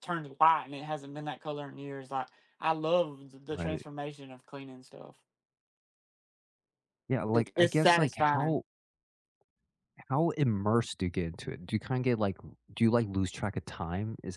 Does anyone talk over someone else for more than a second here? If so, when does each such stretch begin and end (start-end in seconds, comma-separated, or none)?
7.3-8.6